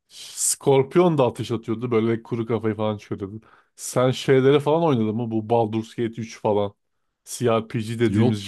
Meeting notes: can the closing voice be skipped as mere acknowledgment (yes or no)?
yes